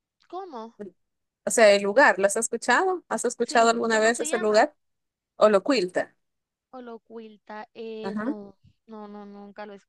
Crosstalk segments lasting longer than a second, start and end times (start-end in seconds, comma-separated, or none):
3.4-4.7